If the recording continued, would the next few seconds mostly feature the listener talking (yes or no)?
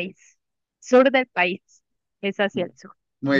yes